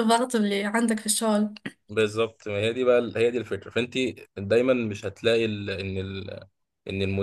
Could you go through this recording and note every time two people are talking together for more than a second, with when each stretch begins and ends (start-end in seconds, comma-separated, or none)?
none